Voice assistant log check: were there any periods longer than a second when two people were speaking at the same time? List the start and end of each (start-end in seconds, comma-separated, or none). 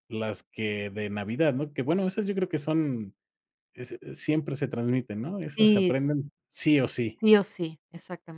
none